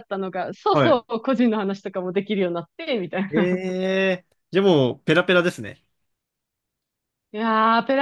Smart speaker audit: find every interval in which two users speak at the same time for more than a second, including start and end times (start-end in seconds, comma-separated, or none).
none